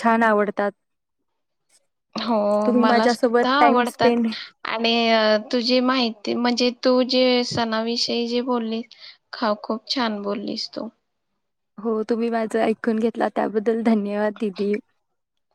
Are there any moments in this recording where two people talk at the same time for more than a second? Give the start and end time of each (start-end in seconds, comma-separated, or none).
2.8-4.1